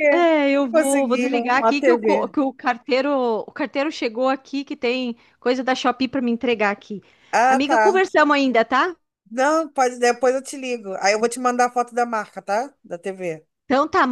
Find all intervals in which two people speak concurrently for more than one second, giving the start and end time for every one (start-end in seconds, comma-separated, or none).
0.6-2.3